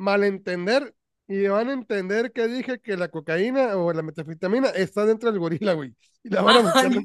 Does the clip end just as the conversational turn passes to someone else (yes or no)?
yes